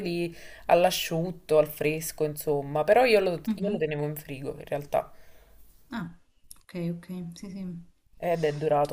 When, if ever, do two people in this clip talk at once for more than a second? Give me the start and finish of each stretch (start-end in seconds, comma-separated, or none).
none